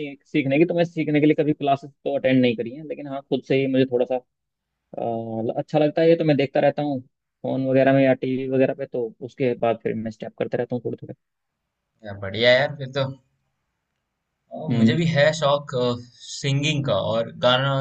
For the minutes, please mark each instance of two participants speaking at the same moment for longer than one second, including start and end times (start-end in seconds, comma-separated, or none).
none